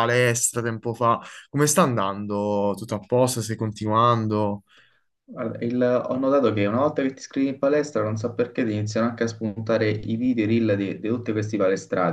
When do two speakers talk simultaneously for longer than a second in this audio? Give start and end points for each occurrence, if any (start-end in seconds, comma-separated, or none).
none